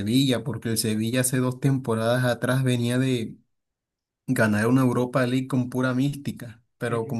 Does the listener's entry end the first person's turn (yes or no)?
no